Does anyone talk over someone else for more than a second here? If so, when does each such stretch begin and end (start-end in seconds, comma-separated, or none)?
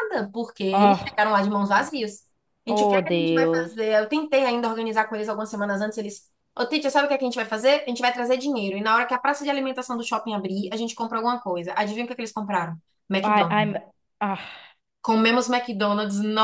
2.7-3.9